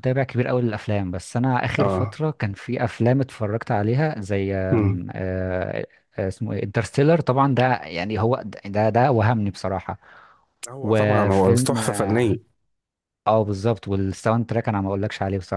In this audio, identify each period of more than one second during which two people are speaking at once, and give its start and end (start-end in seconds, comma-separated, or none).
10.8-12.3